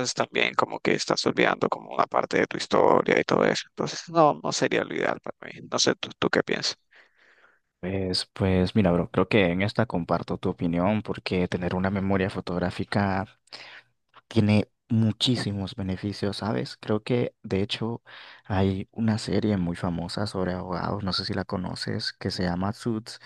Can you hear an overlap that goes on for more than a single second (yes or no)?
no